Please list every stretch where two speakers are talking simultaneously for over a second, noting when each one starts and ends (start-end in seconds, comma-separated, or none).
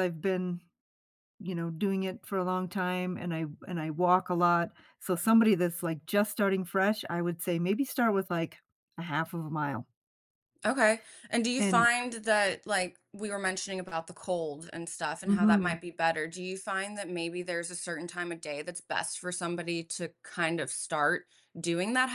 none